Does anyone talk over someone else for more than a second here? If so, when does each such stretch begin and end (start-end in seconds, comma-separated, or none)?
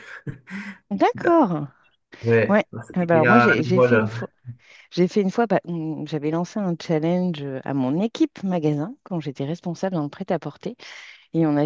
2.5-4.2